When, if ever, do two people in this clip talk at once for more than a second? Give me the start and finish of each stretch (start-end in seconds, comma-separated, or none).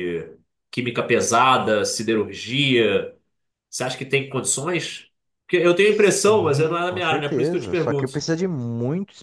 5.8-8.2